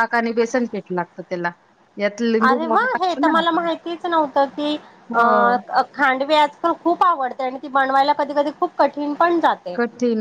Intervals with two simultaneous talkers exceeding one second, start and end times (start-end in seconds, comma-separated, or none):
none